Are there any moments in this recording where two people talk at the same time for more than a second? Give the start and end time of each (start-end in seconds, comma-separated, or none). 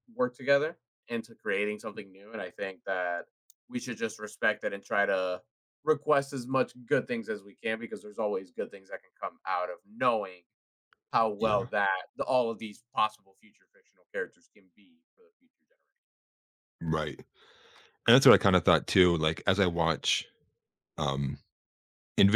none